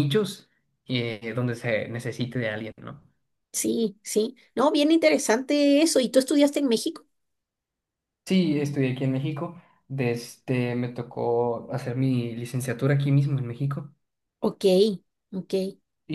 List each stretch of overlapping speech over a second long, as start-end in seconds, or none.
none